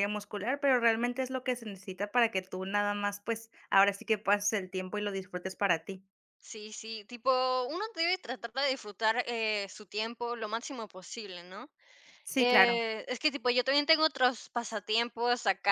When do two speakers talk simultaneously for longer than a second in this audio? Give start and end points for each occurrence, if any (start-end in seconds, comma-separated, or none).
none